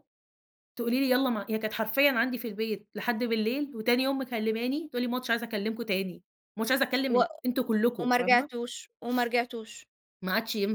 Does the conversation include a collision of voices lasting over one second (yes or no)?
no